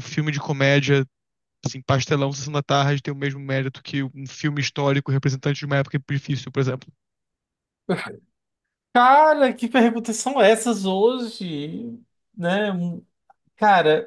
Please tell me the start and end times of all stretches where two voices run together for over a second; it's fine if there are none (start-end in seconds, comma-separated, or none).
none